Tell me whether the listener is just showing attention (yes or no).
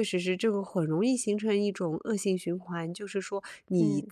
yes